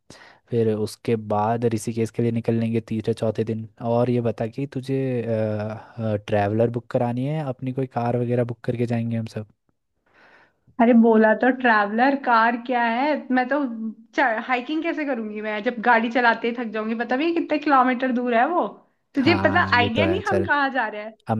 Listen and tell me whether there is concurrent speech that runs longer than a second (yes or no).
yes